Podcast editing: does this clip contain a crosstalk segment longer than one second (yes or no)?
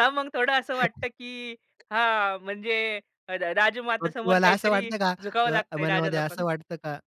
yes